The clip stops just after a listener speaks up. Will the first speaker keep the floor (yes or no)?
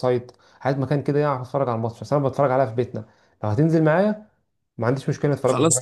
no